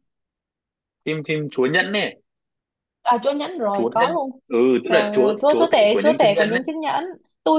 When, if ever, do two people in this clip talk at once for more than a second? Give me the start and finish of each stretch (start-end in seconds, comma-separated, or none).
4.9-6.6